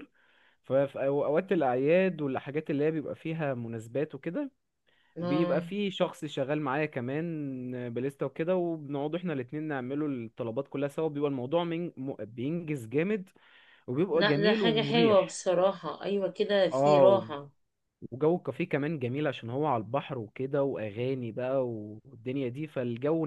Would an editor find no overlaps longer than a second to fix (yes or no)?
no